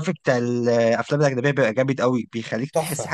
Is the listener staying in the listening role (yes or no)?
no